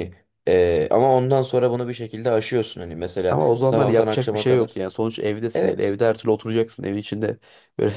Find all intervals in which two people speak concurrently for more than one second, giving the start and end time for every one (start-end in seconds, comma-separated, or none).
3.3-4.8